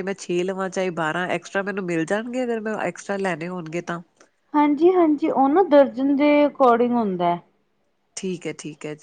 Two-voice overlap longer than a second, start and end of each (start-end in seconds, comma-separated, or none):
none